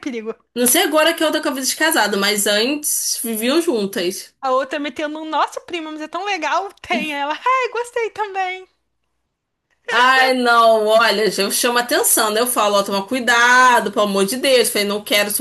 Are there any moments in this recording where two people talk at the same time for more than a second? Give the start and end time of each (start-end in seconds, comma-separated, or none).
none